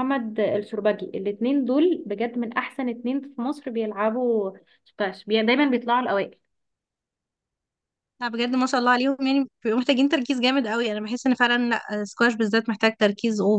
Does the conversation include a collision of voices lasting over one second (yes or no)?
no